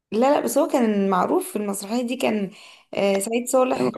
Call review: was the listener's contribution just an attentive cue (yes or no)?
no